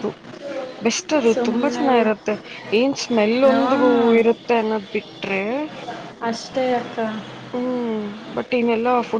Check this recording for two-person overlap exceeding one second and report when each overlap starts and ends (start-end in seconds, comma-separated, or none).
none